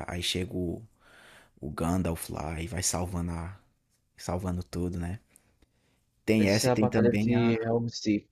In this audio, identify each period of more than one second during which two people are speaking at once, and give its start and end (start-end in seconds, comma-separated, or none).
6.4-7.7